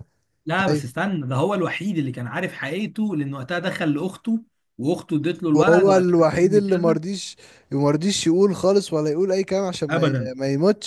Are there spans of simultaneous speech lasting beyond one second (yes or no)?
yes